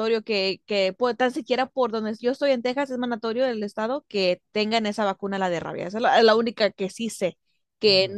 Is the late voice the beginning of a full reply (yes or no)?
no